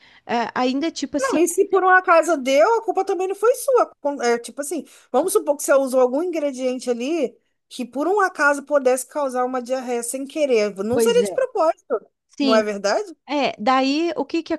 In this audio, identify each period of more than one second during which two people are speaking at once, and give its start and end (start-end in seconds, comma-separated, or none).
none